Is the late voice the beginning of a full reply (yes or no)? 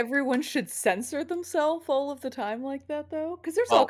no